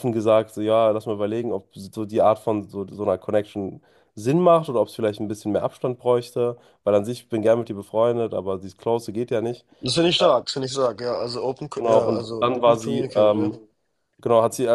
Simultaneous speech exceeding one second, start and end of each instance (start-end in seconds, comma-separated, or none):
11.8-13.5